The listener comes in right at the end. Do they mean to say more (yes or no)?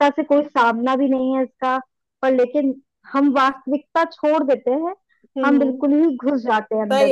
yes